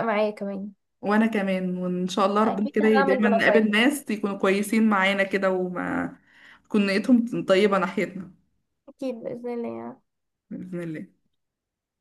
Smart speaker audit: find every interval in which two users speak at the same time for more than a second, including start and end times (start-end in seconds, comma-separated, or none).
2.4-3.8